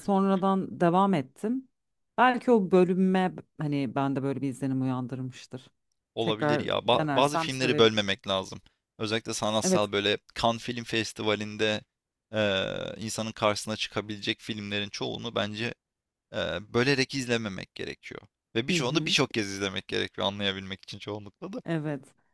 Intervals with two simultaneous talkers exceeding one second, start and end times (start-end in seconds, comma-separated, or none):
6.2-8.2